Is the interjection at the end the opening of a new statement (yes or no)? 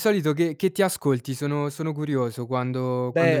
yes